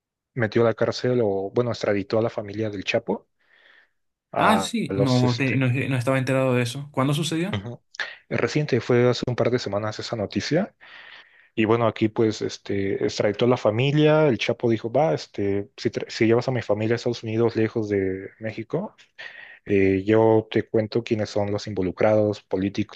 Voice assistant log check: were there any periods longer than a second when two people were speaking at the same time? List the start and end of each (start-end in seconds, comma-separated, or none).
4.4-5.6